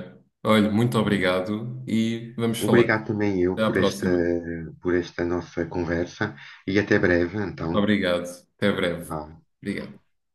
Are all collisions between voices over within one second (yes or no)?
yes